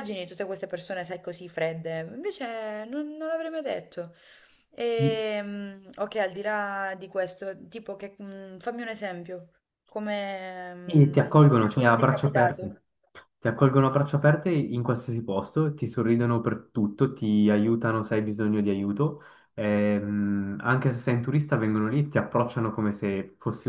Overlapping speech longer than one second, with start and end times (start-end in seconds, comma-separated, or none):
10.8-12.8